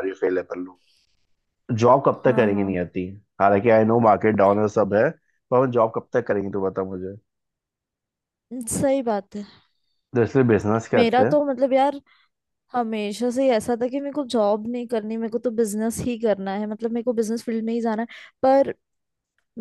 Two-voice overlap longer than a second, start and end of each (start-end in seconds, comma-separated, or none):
none